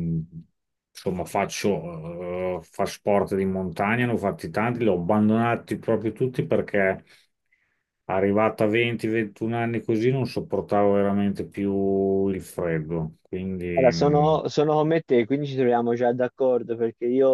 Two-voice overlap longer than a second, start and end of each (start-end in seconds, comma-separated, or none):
none